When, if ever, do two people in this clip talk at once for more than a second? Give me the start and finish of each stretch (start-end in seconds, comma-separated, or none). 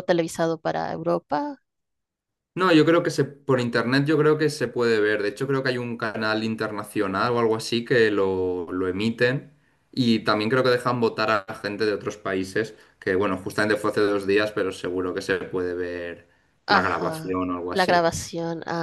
16.7-18.1